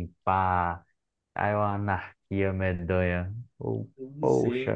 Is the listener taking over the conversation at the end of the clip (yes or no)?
yes